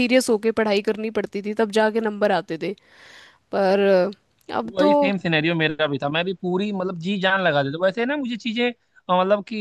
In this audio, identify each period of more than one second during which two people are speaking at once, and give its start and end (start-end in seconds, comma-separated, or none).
none